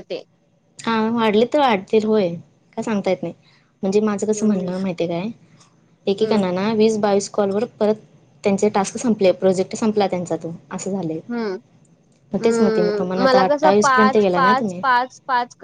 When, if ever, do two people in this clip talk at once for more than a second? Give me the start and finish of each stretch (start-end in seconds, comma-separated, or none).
13.2-14.8